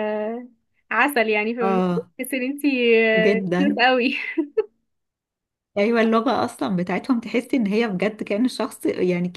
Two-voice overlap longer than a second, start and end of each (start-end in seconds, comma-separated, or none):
none